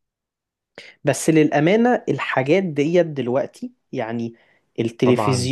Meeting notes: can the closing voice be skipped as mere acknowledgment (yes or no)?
yes